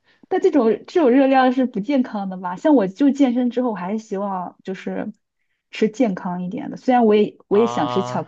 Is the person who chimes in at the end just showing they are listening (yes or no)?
yes